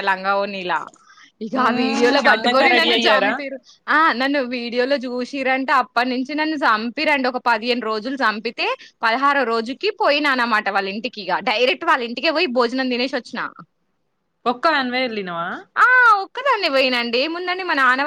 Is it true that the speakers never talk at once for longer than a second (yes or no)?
no